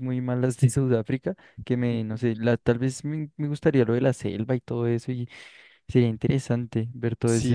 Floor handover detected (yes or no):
yes